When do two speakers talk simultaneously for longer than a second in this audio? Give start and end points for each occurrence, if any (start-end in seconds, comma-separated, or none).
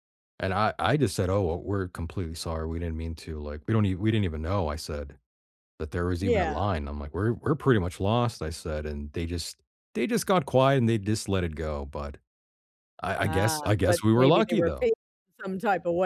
13.2-14.9